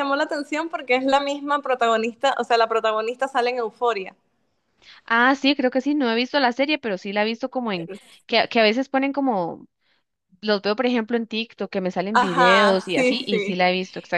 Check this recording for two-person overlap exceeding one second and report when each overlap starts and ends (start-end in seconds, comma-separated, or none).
12.1-13.6